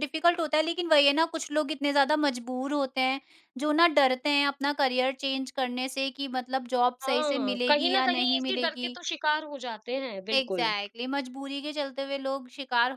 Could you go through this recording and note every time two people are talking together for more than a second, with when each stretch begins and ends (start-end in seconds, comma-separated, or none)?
7.0-9.0